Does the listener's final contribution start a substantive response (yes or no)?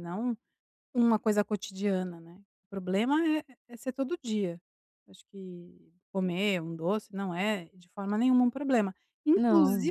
no